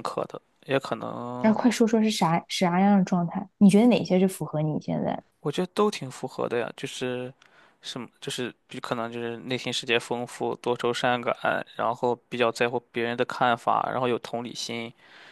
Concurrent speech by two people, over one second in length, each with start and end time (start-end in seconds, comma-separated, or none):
none